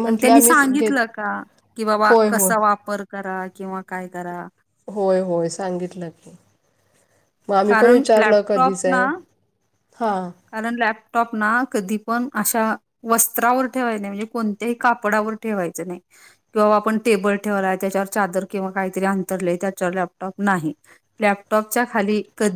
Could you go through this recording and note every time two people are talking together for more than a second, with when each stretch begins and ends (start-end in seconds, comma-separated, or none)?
none